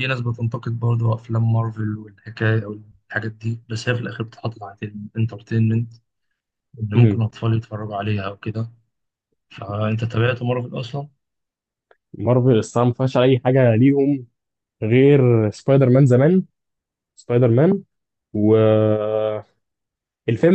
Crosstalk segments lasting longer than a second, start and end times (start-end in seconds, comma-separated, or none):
none